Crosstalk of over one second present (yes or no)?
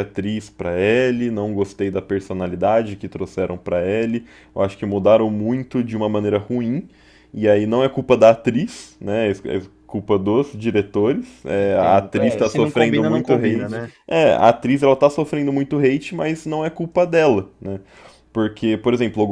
yes